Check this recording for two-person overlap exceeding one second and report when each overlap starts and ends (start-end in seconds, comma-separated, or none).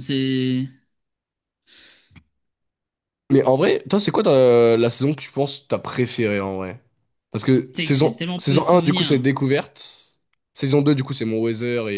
7.7-9.2